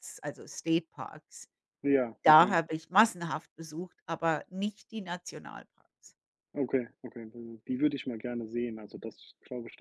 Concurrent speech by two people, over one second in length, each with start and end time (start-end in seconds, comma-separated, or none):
none